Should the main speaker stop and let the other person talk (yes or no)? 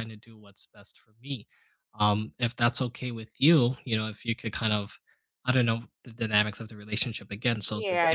yes